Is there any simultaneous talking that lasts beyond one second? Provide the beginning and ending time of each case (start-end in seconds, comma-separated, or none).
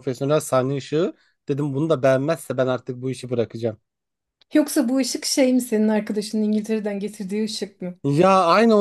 none